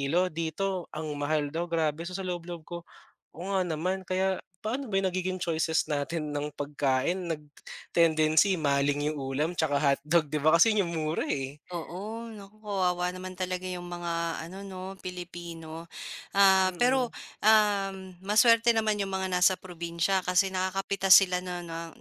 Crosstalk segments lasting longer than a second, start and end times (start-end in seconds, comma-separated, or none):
none